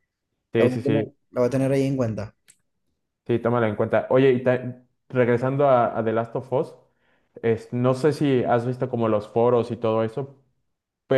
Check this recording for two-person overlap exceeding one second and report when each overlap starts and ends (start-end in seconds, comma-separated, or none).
none